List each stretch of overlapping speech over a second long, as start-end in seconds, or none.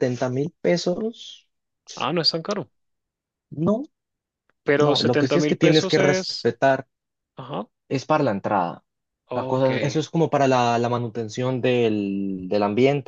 4.8-6.5